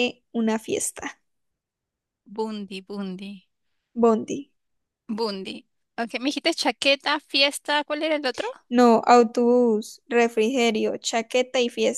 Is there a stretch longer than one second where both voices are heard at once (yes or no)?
no